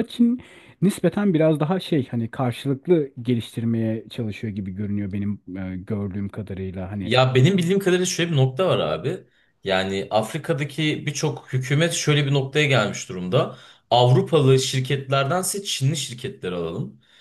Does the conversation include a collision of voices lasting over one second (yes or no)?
no